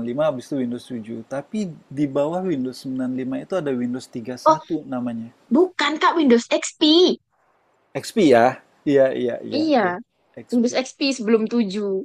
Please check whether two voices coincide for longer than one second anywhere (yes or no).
no